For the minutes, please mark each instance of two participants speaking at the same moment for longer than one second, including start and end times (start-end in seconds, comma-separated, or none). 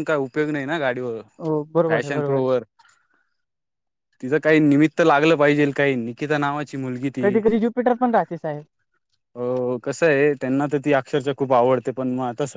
none